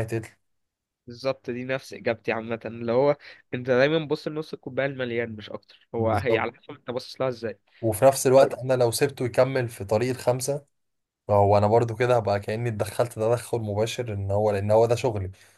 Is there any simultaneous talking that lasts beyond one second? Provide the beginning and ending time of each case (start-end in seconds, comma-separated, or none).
none